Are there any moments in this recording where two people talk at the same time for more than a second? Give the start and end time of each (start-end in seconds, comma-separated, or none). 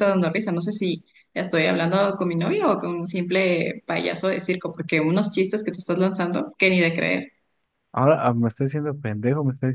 none